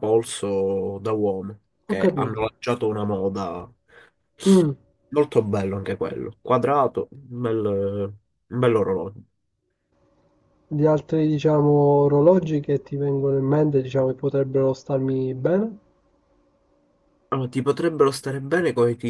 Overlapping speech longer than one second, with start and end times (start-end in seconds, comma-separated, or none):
none